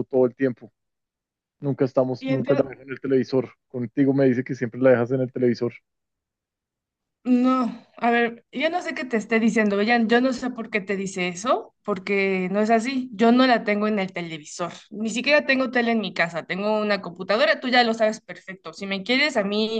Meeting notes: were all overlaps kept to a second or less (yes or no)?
yes